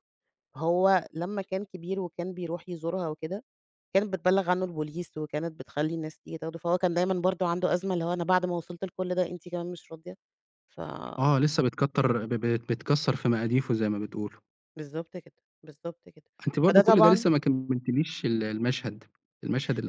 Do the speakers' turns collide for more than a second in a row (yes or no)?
no